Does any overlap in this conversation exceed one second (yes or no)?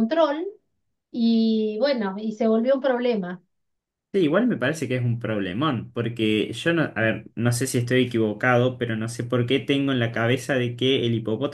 no